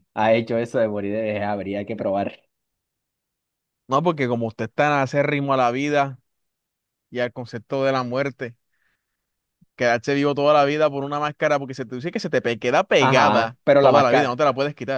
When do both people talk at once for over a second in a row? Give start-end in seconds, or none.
13.0-14.4